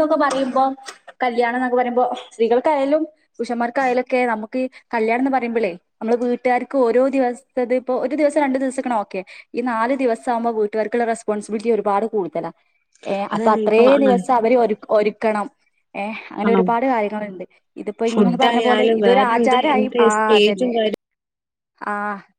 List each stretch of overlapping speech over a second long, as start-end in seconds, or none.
18.1-20.7